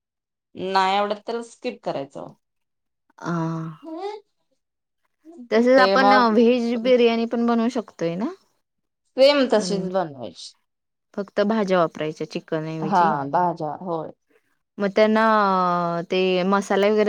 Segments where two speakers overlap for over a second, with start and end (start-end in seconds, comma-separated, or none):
none